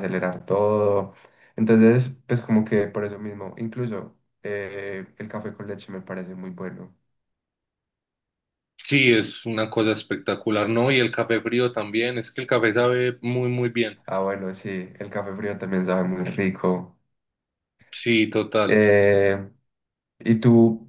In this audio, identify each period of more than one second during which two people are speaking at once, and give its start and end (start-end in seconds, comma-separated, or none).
none